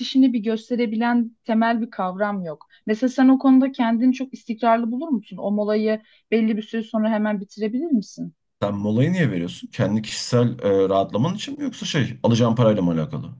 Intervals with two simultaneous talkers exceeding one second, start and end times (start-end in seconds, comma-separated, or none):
none